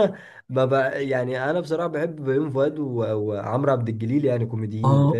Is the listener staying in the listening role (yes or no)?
no